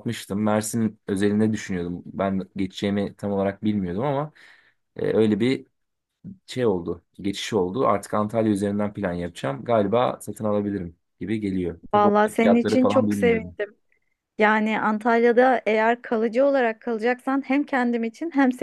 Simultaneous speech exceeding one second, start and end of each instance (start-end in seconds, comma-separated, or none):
11.9-13.6